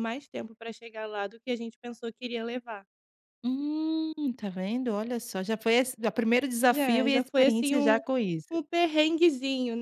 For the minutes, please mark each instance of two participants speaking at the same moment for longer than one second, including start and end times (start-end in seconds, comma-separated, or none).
6.7-8.0